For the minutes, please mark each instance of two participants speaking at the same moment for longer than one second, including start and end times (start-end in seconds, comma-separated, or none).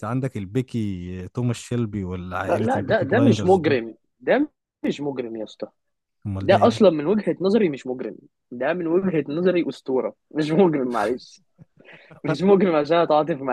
2.4-3.8